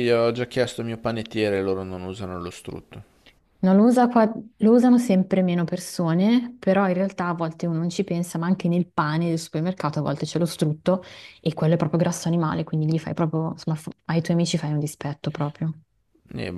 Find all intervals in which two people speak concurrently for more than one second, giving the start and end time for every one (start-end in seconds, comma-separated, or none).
none